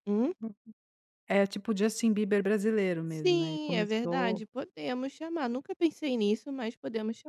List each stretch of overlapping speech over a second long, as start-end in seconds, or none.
3.1-4.4